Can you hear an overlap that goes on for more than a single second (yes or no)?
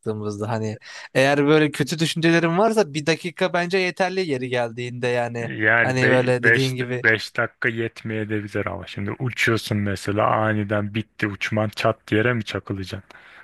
yes